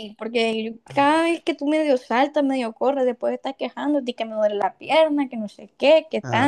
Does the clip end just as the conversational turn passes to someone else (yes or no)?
yes